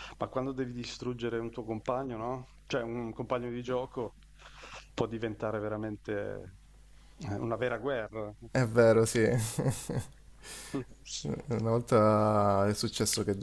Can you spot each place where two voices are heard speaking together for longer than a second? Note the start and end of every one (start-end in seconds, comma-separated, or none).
none